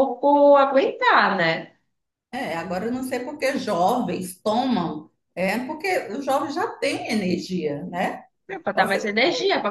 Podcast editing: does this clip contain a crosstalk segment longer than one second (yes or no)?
no